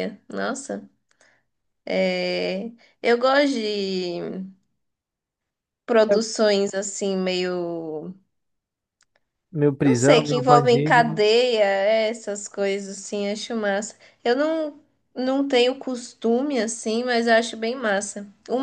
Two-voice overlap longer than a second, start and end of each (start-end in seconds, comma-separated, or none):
9.8-11.2